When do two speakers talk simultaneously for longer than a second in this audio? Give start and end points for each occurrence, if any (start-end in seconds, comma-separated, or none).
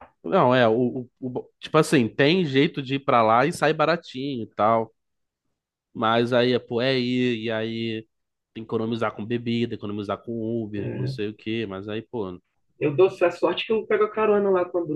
none